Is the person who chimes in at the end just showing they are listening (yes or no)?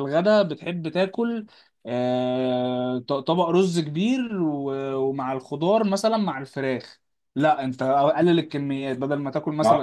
no